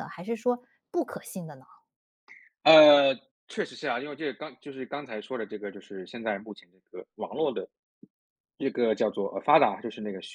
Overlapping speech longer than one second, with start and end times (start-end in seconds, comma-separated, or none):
none